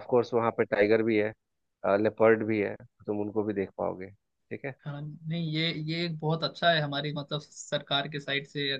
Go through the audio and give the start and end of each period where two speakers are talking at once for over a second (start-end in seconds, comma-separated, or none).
none